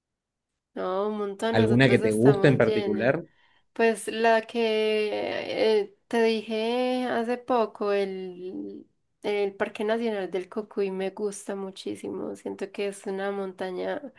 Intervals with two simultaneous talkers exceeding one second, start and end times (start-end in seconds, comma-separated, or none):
1.5-3.1